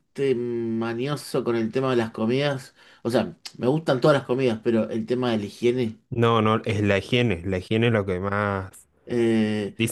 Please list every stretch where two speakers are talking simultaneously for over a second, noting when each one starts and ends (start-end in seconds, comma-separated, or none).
none